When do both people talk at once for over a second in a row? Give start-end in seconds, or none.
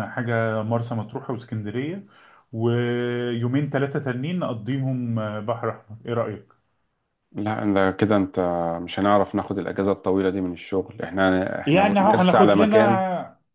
11.7-13.0